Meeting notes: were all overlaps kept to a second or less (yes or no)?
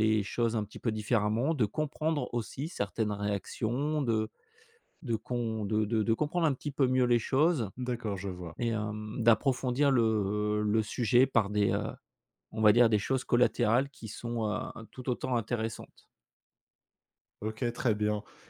yes